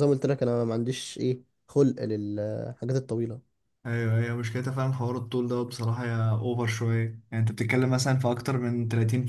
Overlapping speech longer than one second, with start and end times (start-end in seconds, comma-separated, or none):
none